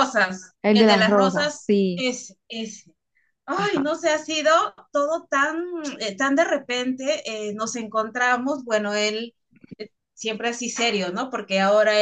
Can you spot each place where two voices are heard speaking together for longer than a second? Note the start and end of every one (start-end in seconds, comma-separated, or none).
0.6-2.0